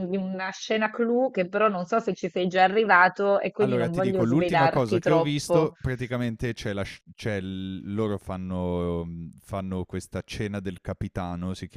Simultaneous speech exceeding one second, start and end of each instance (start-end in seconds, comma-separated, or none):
3.6-5.7